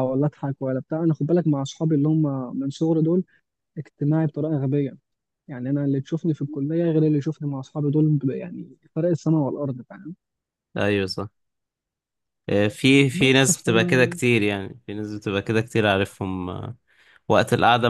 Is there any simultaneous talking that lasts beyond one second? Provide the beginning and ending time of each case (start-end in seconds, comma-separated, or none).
none